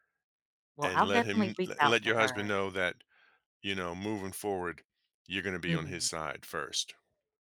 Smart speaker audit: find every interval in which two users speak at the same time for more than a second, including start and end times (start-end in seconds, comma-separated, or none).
0.8-2.5